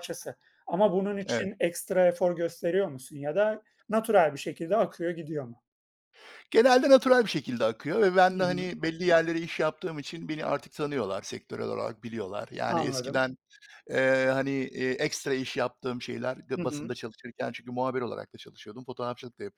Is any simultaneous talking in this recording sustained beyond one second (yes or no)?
no